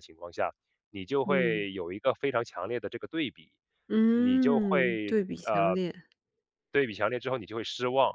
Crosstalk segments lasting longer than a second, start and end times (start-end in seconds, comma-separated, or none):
4.1-5.8